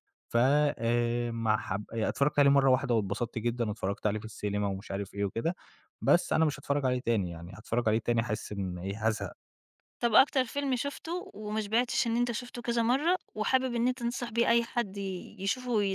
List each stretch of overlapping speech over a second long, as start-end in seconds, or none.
none